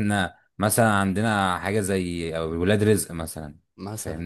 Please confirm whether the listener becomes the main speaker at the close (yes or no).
no